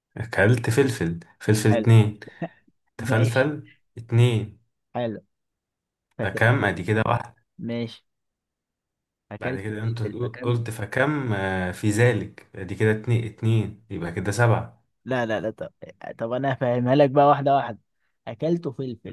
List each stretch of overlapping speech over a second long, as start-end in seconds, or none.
9.4-10.6